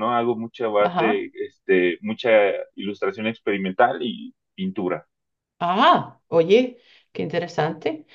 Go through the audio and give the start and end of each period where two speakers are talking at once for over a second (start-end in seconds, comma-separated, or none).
none